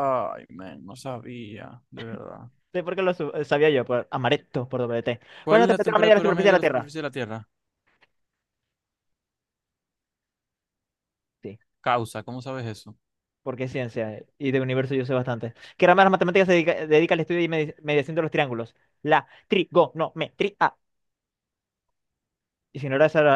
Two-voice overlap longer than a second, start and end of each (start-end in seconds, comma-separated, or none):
5.4-6.9